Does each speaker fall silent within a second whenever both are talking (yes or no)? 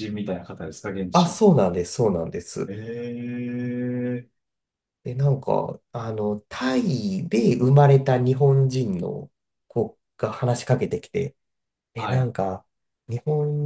yes